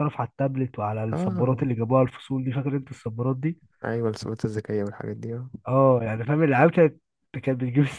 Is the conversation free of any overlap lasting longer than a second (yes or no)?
yes